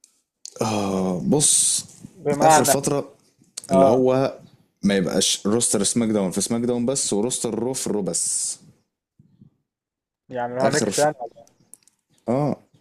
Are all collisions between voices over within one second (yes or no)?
yes